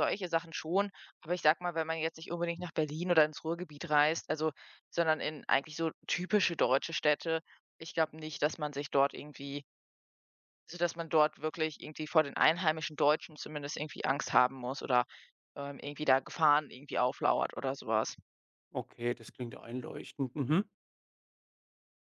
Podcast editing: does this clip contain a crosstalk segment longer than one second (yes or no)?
no